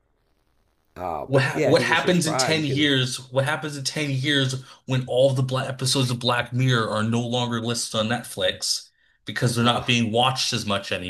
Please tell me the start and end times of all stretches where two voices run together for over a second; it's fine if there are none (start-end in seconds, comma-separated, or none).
1.3-2.9